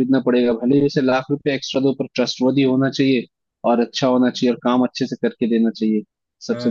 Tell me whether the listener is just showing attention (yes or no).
no